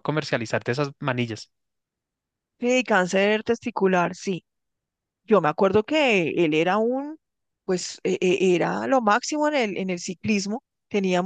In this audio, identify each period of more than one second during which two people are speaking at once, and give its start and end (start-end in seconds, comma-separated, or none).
none